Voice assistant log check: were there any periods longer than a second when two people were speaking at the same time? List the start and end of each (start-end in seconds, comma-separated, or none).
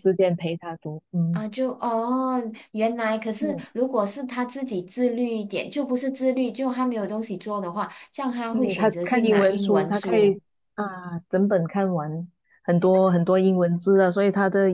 8.5-10.4